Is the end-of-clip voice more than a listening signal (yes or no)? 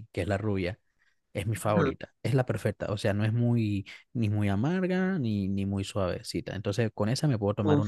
yes